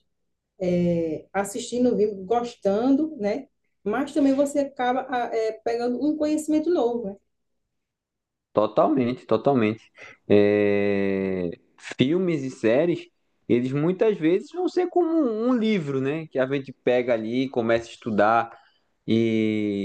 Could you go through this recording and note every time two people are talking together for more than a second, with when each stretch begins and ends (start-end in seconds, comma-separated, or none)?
none